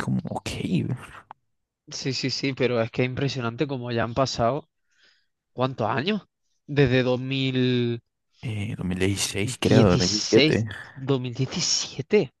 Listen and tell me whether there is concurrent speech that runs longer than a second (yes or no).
yes